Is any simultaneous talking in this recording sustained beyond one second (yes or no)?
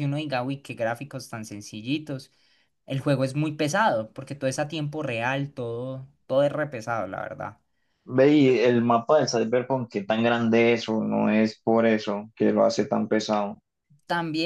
no